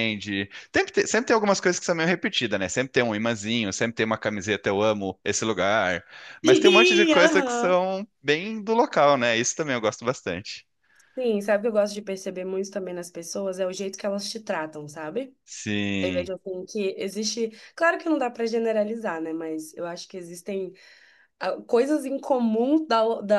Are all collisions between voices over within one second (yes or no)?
no